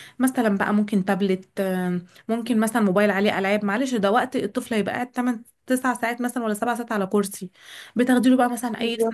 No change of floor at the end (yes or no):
yes